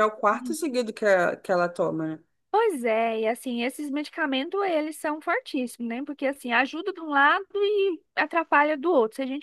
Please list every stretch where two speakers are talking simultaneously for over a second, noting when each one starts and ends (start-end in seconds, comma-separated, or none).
none